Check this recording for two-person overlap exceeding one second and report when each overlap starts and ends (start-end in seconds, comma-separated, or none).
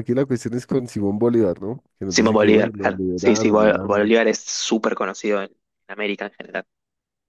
2.1-4.1